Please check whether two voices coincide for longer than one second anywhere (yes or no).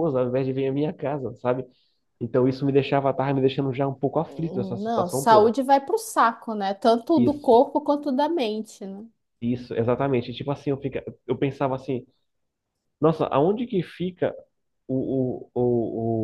yes